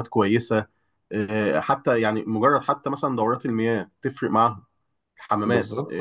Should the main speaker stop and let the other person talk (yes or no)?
no